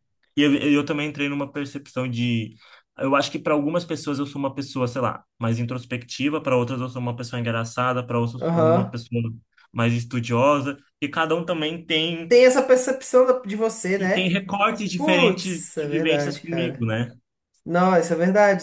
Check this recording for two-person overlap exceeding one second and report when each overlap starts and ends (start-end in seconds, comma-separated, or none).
15.0-16.9